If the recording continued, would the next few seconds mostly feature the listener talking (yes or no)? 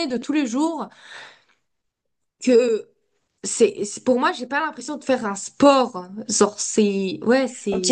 yes